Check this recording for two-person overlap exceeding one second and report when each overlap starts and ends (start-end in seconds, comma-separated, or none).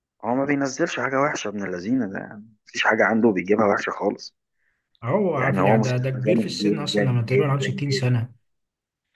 5.3-8.1